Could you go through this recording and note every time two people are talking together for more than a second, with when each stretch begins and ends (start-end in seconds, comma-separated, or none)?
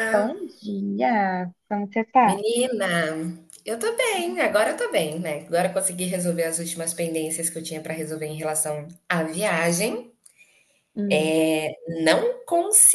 none